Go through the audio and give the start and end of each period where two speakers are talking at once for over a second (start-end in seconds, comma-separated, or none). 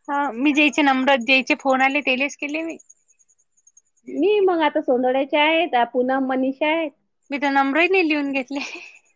none